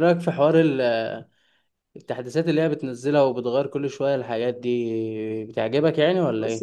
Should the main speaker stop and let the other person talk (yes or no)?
yes